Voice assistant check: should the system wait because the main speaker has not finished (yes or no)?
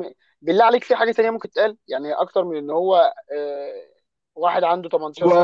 no